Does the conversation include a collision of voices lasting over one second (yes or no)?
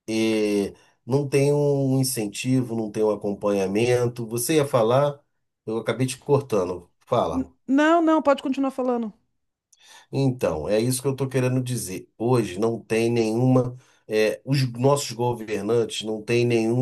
no